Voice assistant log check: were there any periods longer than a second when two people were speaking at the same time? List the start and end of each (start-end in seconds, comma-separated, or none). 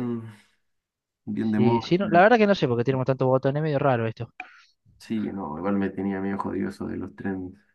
none